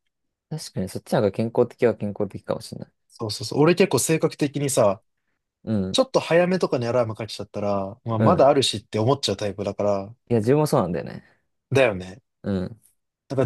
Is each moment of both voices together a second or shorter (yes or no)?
yes